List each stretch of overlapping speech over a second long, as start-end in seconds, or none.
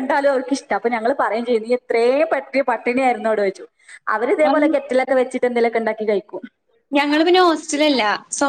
none